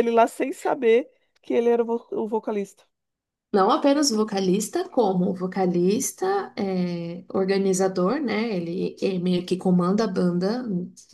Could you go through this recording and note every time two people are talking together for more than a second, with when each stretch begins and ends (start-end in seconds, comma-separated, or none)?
none